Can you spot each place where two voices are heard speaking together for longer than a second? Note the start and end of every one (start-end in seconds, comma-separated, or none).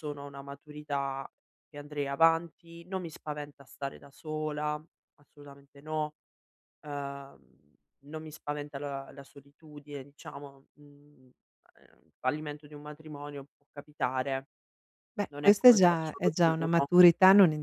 15.3-16.9